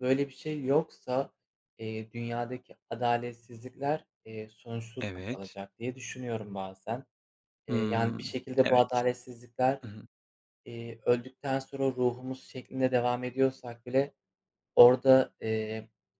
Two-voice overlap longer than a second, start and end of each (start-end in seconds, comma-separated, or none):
7.7-9.0